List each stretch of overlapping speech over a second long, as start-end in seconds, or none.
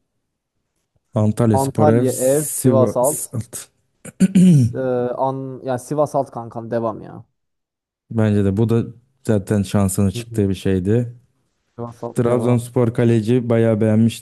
1.5-3.1